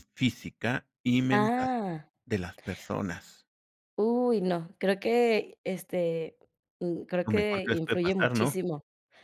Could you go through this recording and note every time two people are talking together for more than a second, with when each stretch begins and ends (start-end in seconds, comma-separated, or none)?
7.2-8.6